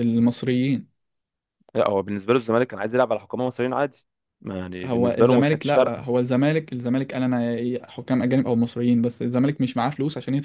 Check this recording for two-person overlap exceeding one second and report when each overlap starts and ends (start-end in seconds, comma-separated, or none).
4.8-6.1